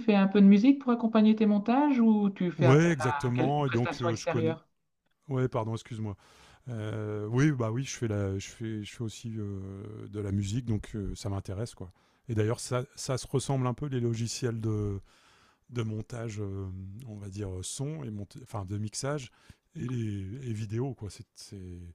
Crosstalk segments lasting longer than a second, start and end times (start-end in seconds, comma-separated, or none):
2.6-4.6